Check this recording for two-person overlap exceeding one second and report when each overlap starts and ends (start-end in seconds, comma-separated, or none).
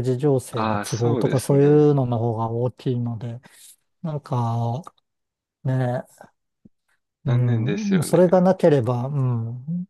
0.5-1.9, 7.3-8.5